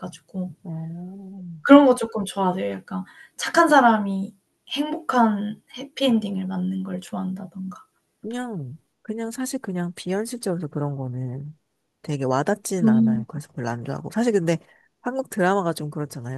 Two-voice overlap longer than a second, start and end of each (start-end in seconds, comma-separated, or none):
none